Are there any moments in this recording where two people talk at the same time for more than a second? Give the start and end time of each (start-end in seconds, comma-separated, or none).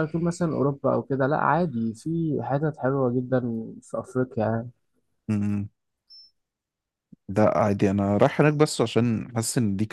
none